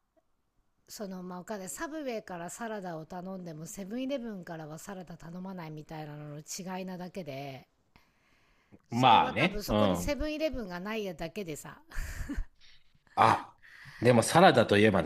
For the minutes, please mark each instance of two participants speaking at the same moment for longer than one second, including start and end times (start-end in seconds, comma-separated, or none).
8.9-10.1